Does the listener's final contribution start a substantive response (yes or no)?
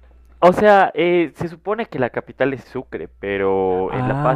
no